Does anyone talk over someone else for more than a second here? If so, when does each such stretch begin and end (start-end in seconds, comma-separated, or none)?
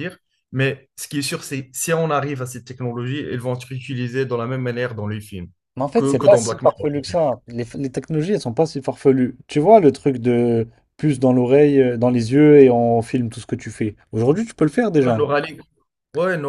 6.0-7.2